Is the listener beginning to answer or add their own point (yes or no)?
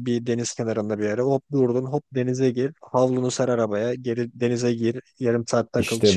no